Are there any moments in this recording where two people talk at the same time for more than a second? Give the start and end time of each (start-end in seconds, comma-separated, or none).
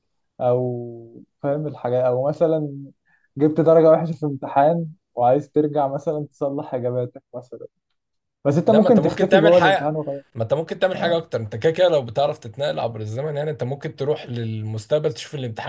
8.7-9.9